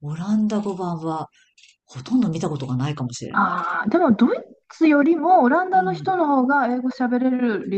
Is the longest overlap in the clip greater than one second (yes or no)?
no